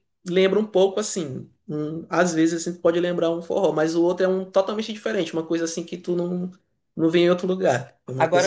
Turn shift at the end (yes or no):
yes